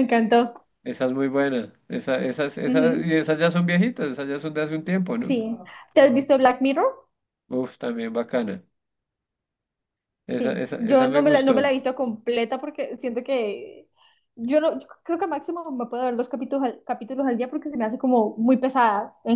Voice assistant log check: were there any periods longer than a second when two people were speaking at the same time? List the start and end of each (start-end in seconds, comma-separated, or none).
10.3-11.7